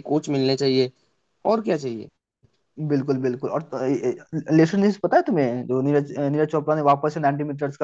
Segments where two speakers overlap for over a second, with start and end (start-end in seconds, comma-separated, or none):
none